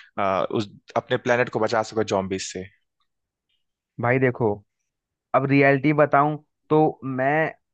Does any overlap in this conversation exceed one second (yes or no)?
no